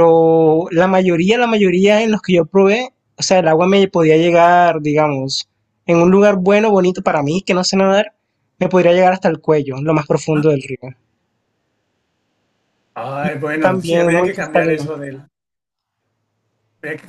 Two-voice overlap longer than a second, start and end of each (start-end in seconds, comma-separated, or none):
13.2-14.9